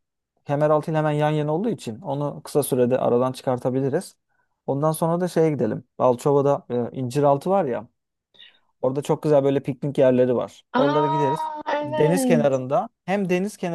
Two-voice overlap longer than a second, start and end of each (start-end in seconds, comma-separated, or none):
10.7-12.6